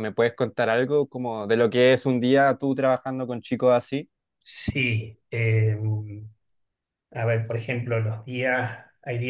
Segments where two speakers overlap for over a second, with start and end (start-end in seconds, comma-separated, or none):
none